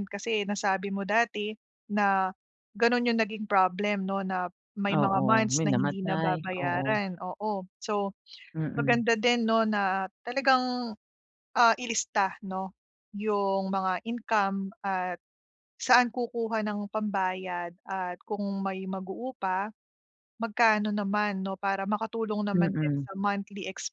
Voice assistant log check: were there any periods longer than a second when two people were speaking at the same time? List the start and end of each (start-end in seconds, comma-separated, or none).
4.9-7.0